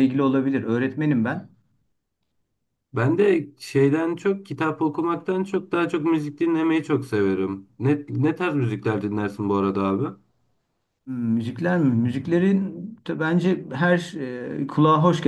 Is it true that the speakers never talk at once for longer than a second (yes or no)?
yes